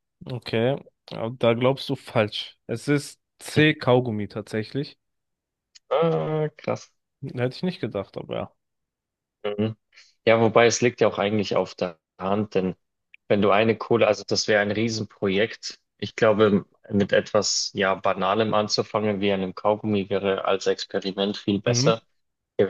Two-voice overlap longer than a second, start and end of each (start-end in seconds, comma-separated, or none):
none